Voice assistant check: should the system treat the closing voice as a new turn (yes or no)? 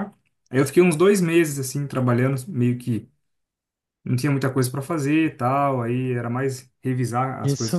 yes